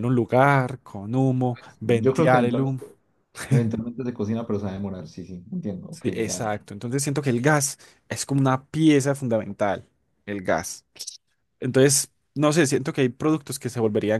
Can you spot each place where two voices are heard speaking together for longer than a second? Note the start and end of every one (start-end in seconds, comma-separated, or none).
1.5-2.8